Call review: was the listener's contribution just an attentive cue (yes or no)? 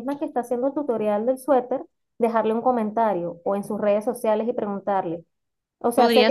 yes